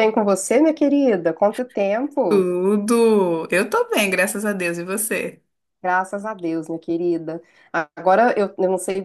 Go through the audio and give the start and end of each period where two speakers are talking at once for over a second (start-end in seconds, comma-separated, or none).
none